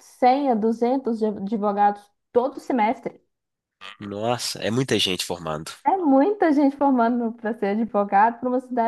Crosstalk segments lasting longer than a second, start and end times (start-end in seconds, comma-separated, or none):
none